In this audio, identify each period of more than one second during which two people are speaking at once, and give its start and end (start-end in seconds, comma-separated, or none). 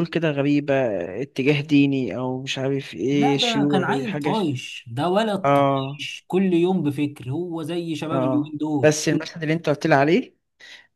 3.1-4.5